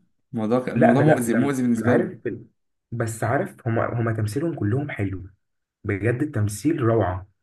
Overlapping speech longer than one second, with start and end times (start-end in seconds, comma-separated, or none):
0.8-2.2